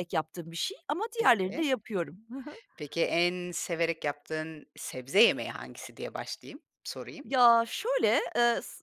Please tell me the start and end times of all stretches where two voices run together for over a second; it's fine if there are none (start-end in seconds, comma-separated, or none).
none